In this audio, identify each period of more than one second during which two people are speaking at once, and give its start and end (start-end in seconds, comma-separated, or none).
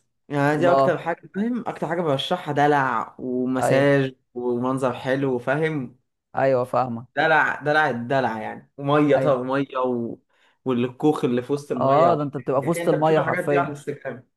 11.8-13.8